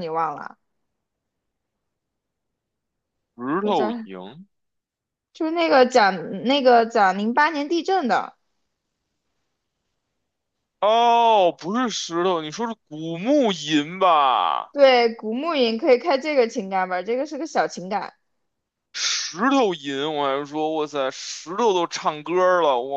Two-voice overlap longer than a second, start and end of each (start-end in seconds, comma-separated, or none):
none